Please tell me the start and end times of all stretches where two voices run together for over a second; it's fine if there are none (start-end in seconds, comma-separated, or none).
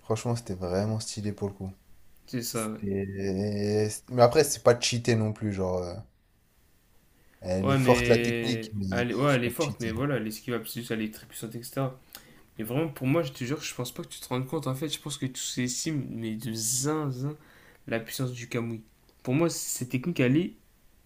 7.6-9.9